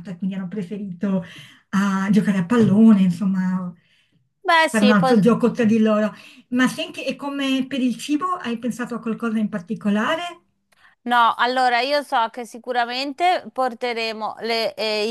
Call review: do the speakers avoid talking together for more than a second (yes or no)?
yes